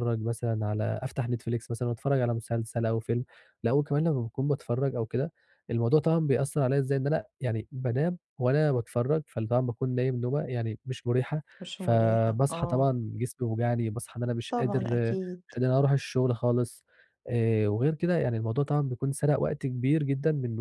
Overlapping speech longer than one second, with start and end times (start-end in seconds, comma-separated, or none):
11.6-12.9